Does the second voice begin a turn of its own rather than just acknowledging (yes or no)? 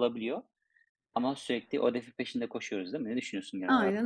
yes